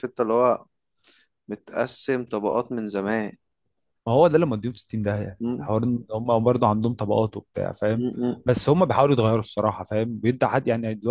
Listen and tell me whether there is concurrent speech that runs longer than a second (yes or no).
no